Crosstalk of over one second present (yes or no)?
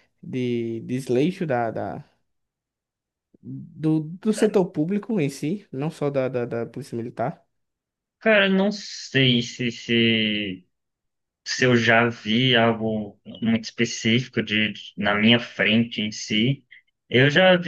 no